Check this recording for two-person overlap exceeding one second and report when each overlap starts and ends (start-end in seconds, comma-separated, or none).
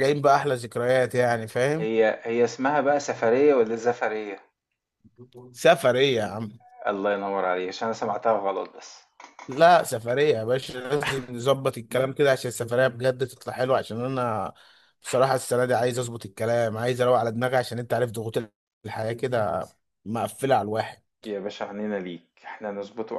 none